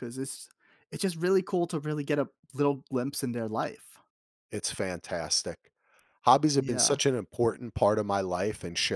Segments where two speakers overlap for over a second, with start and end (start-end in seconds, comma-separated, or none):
none